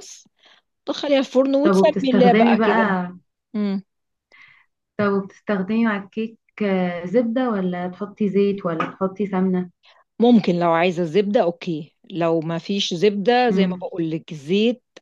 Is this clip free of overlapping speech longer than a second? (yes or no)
no